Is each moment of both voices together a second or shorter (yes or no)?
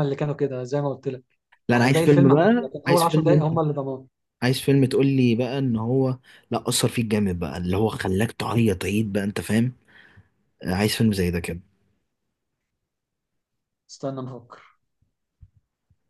no